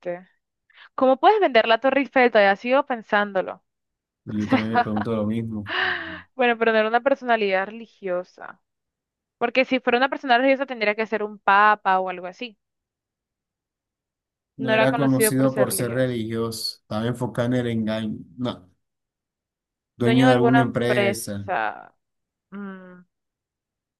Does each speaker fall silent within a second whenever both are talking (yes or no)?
no